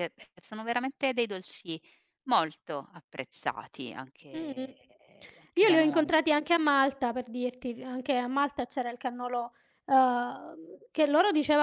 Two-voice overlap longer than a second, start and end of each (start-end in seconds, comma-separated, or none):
none